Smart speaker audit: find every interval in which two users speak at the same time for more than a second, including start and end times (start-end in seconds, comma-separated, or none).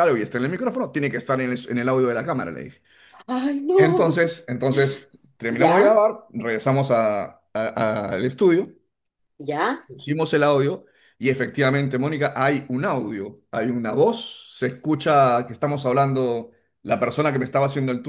none